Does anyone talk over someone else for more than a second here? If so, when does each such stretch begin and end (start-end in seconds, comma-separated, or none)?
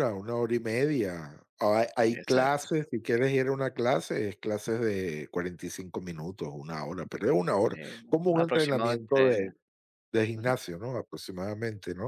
7.7-9.5